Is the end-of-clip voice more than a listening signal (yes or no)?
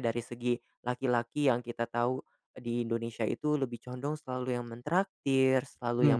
no